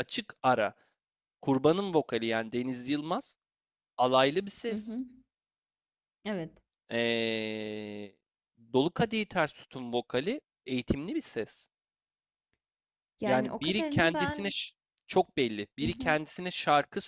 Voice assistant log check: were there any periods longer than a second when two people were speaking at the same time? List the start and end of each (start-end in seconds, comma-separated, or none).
13.2-14.5